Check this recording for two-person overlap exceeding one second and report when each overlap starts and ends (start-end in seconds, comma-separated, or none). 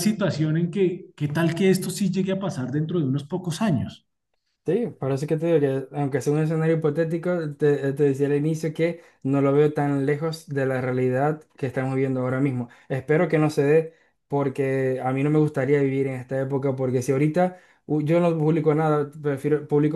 none